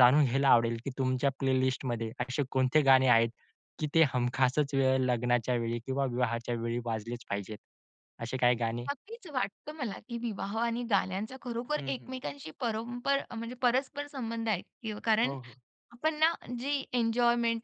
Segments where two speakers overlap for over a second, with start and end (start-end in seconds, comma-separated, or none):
none